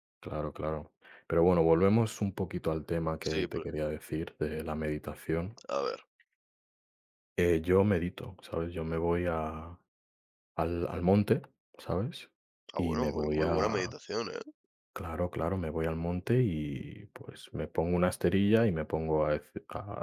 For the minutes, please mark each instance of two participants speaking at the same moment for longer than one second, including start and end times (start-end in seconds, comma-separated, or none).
12.7-13.9